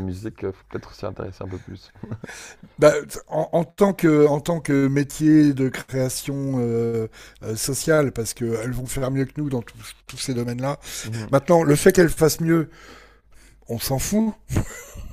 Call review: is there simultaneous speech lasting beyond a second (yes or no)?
no